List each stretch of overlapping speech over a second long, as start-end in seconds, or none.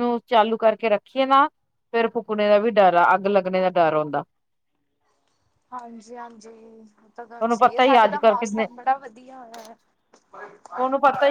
7.3-8.7